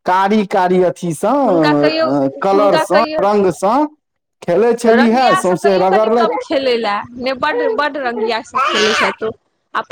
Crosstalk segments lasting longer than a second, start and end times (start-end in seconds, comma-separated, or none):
4.9-6.5